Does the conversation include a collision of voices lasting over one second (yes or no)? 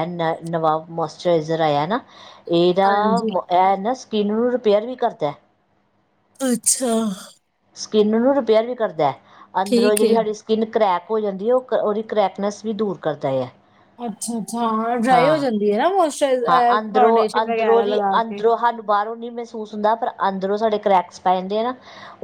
yes